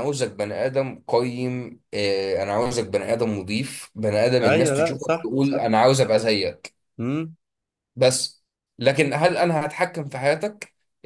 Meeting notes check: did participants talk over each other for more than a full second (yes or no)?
yes